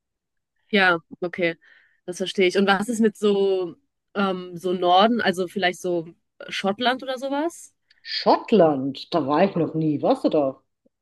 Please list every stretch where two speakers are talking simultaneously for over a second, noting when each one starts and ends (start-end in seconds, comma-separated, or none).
none